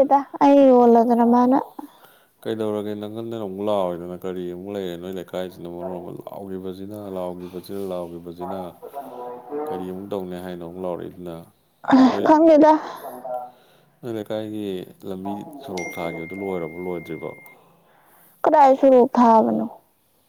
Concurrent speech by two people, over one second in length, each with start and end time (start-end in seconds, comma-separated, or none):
none